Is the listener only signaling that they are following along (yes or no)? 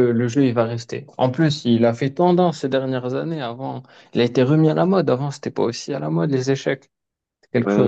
no